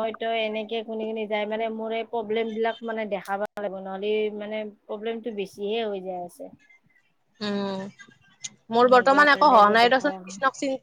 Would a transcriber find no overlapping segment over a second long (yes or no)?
no